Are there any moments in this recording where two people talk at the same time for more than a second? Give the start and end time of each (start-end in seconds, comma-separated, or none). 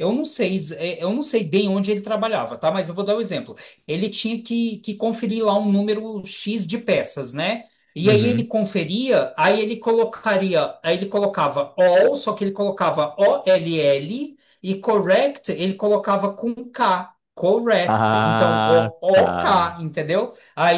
17.9-19.4